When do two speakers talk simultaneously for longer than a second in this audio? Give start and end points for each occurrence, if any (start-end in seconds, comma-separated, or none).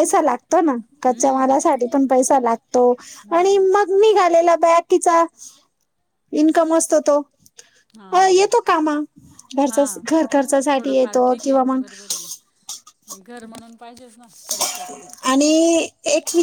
9.7-11.8